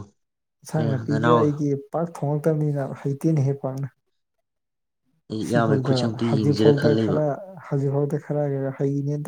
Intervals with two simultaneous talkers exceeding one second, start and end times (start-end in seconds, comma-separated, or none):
5.5-7.2